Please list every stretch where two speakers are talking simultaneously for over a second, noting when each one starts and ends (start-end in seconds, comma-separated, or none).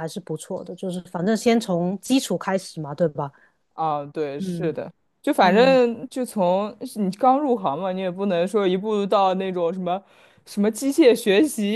none